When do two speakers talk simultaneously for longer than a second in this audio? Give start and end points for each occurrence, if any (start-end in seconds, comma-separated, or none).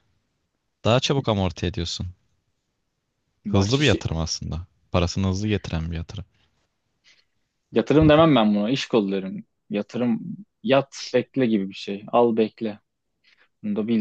none